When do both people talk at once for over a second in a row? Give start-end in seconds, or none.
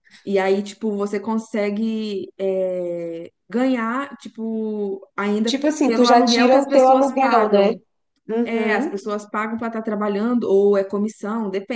5.5-7.7